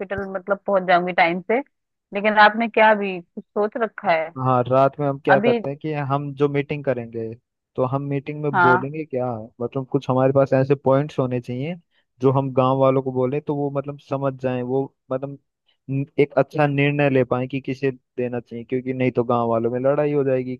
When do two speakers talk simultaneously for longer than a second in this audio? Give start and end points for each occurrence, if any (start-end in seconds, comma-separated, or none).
none